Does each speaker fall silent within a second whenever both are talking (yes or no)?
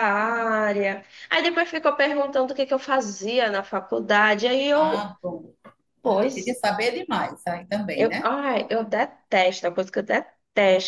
yes